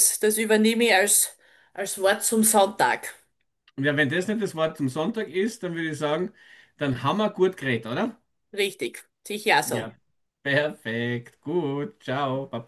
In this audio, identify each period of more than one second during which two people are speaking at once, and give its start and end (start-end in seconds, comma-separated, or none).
none